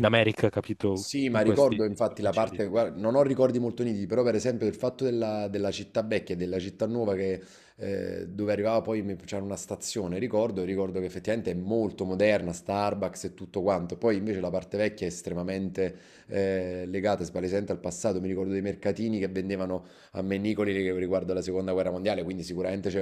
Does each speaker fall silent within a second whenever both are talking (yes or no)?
no